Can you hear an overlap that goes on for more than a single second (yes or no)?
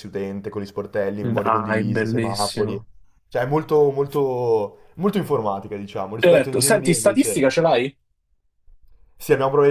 yes